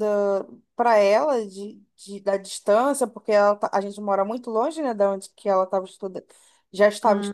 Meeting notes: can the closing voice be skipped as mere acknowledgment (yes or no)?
yes